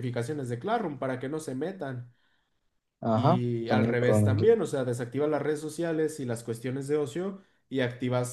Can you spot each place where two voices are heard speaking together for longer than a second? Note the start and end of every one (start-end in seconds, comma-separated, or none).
3.1-4.5